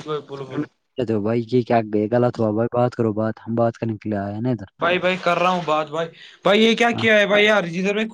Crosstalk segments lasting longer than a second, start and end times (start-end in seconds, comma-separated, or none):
none